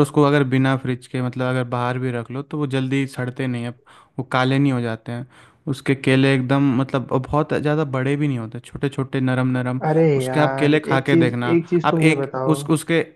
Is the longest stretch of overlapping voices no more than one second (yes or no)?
no